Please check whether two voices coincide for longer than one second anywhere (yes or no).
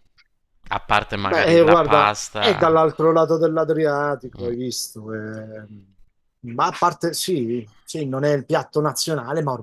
yes